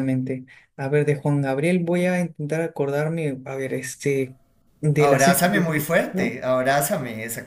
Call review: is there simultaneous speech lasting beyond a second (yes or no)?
yes